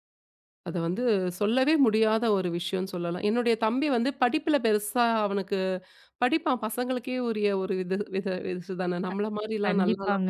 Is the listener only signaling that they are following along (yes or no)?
no